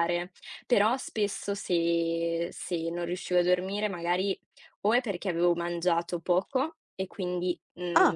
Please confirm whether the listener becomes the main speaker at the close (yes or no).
no